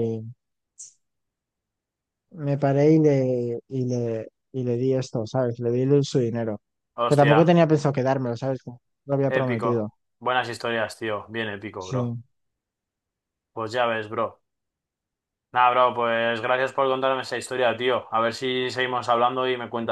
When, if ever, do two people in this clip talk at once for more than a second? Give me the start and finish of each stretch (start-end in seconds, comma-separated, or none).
none